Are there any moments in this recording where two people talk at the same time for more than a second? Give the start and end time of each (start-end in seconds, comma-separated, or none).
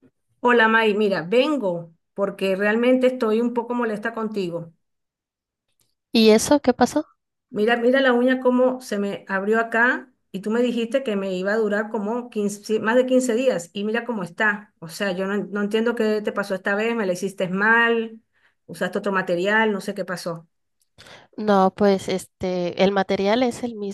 none